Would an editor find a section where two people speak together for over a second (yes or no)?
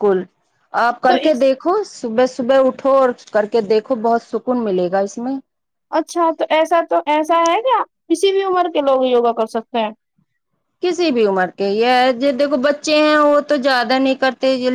no